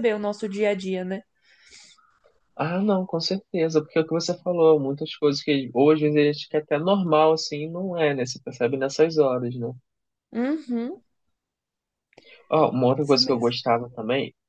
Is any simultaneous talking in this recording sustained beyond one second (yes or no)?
no